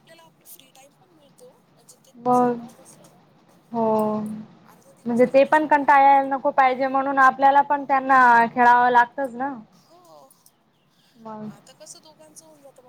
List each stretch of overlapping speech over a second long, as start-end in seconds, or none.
5.0-6.5